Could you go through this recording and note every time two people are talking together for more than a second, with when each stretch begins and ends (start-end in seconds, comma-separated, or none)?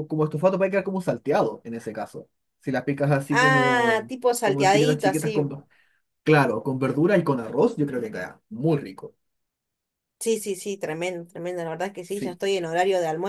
3.3-5.4